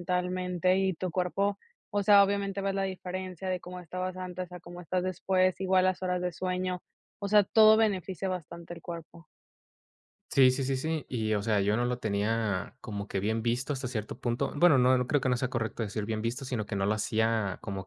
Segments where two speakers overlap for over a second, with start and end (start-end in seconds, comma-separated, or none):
none